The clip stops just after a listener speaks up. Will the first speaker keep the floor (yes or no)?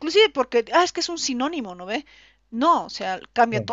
yes